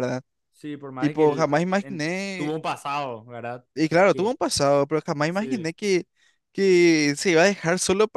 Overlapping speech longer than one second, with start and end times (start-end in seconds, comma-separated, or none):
1.0-2.5